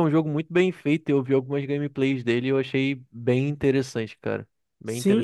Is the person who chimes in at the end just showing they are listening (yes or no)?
no